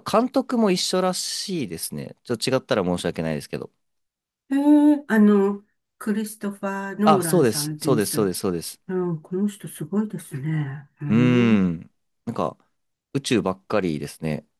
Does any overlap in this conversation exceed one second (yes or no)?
yes